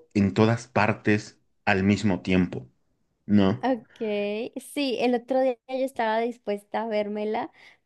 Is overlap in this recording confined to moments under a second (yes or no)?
yes